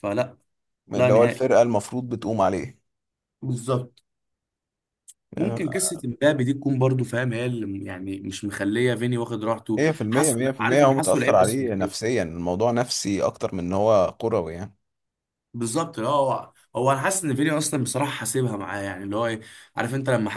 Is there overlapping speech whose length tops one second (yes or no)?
yes